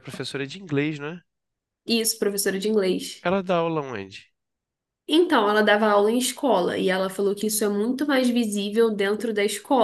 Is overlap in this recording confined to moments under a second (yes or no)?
yes